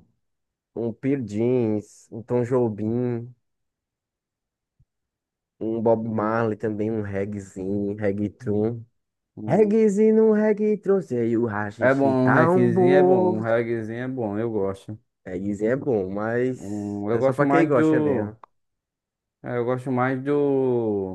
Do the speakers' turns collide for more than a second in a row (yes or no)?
yes